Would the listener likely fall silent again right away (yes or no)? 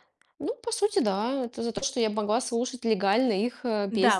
no